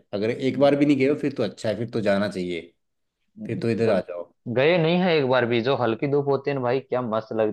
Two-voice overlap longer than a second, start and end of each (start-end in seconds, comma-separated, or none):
none